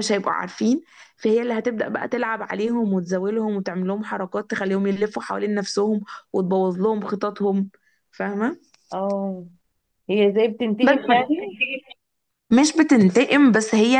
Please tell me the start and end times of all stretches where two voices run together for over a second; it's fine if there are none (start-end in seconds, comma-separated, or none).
none